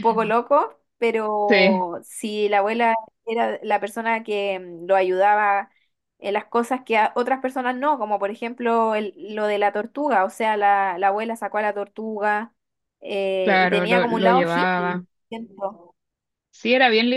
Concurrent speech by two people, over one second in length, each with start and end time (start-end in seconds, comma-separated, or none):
13.4-15.1